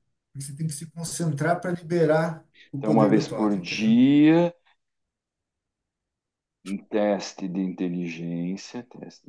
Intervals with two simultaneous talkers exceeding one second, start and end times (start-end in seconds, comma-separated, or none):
2.8-4.0